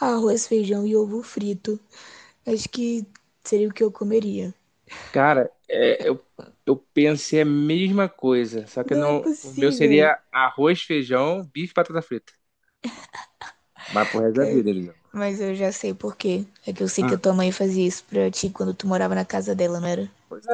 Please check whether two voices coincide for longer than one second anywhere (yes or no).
yes